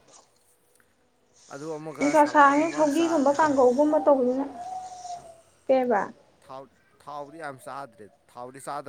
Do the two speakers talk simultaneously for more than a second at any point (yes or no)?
yes